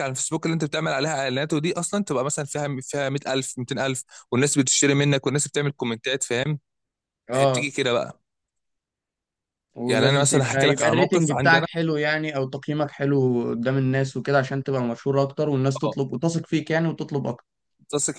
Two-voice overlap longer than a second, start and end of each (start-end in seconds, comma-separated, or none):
9.9-11.7